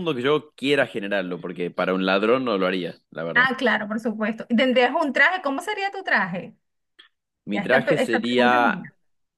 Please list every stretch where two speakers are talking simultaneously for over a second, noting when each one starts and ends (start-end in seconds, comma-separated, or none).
7.5-8.9